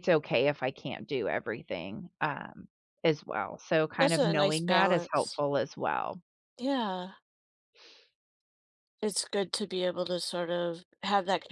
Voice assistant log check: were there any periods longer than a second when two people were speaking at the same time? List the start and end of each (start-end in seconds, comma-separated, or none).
4.0-5.4